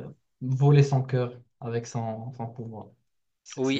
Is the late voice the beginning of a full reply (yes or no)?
yes